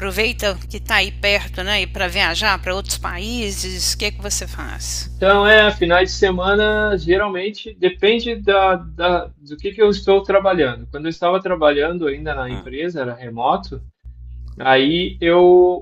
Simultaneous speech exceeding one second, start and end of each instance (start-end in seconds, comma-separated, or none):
none